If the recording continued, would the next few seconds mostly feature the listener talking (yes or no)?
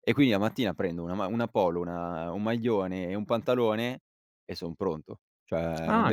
yes